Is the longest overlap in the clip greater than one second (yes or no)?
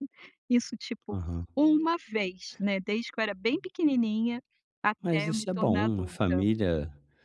yes